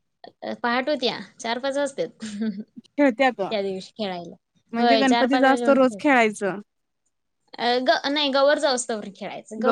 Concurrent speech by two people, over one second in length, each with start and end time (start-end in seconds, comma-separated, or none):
4.8-6.2